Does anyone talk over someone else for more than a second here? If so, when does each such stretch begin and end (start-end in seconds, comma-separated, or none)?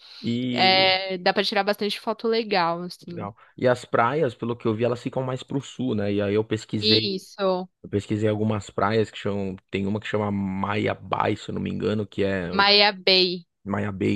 none